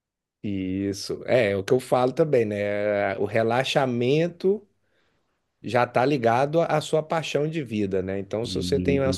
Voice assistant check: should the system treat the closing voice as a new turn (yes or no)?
no